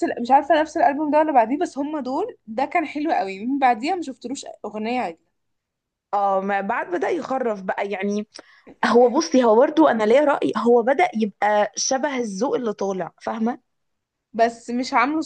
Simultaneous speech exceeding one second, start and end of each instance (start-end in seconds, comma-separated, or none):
none